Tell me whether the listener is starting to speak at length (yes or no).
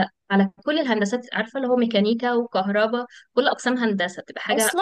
yes